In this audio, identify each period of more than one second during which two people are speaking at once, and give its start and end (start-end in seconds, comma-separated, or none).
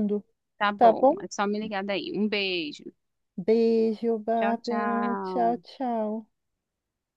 4.4-5.6